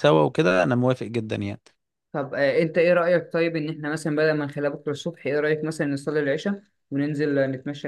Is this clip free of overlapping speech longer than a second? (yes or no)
yes